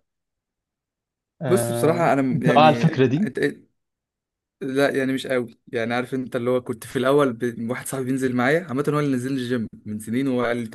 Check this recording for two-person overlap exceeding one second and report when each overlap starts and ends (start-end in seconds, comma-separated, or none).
1.4-3.3